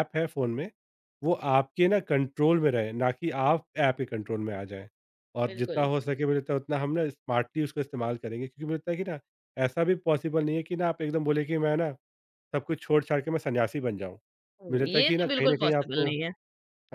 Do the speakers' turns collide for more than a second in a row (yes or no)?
yes